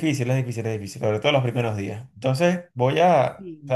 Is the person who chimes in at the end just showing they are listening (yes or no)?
yes